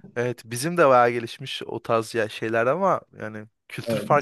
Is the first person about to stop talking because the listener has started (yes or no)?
no